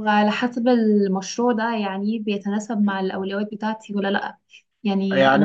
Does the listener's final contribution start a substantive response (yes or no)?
yes